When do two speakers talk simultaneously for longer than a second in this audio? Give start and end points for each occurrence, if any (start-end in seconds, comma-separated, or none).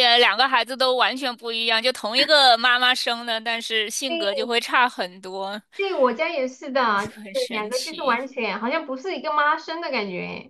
6.8-8.2